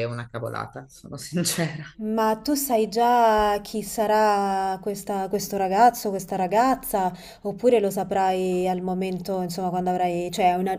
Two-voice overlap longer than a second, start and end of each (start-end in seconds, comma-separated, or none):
none